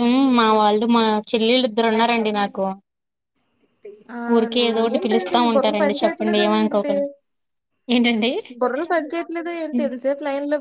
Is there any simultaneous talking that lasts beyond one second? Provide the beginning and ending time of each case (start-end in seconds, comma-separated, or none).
4.5-6.9